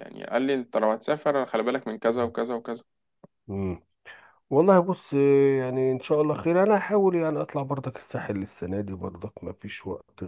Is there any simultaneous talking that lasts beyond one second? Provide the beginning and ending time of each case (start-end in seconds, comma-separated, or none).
none